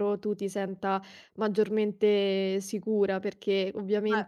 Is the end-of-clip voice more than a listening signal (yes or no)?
no